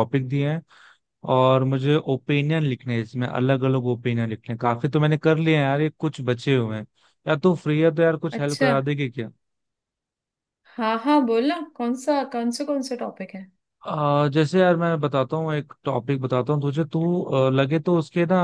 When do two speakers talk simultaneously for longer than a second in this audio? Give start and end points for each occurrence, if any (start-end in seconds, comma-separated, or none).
none